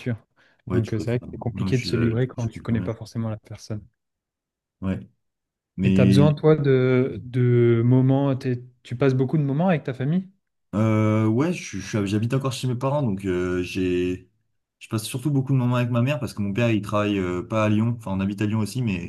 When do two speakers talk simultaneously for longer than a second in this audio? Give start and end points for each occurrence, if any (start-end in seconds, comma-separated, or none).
0.7-3.0